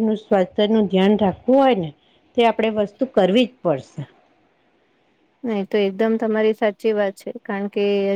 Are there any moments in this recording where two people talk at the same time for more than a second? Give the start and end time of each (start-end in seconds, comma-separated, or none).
none